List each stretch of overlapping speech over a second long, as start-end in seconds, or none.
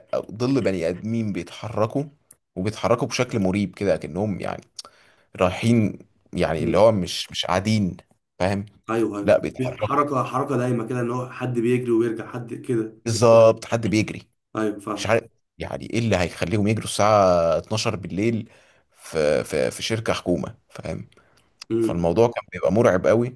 none